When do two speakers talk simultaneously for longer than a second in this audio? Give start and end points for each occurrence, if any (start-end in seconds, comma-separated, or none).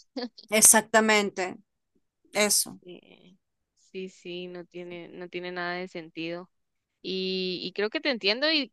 none